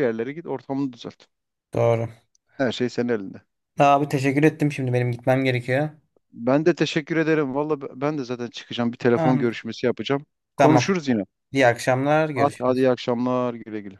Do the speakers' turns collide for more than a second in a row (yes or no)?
no